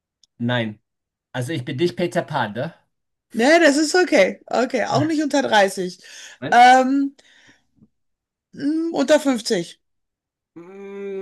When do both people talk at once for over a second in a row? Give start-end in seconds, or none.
none